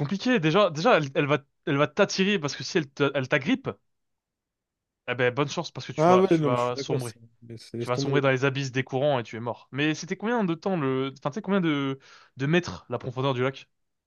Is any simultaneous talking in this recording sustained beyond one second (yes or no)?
yes